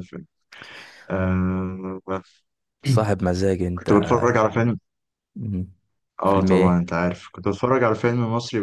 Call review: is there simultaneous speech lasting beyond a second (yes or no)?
no